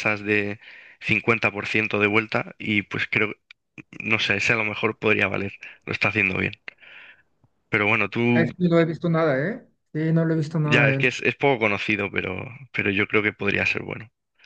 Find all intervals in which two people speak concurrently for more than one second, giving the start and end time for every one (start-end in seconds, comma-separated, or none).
none